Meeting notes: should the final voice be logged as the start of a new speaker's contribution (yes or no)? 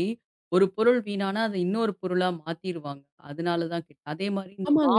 yes